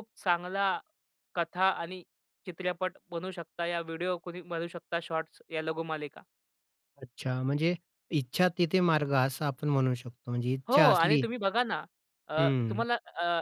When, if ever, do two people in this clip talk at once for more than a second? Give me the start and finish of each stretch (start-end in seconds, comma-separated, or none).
none